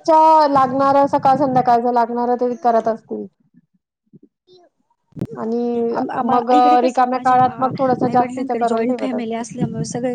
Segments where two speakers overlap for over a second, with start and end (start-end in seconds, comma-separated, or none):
6.3-9.5